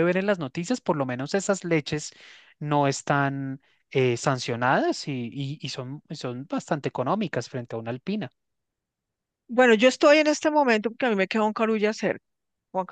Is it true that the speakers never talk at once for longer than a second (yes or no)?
yes